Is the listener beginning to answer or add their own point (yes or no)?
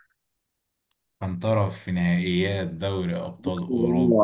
yes